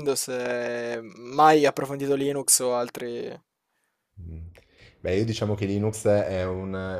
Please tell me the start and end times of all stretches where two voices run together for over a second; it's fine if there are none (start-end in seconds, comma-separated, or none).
none